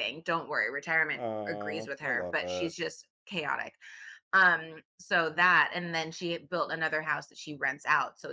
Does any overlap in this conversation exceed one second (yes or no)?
yes